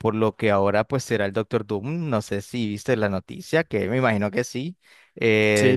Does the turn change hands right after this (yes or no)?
no